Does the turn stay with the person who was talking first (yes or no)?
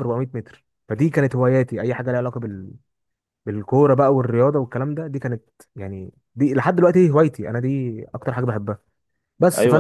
no